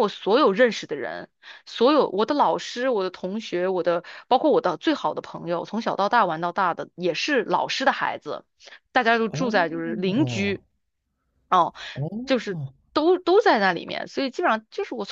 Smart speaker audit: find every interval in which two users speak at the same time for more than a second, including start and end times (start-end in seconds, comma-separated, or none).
9.4-10.6